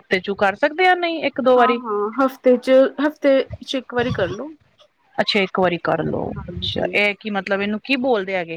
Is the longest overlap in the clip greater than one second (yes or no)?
no